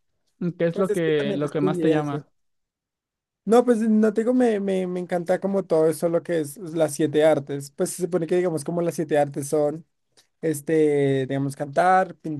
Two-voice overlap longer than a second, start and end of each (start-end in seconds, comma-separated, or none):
0.7-2.2